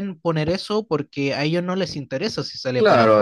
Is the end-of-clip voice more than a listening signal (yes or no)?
yes